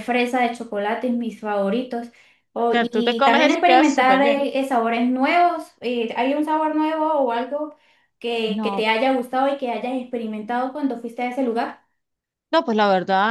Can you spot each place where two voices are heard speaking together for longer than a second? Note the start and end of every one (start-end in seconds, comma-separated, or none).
2.7-4.4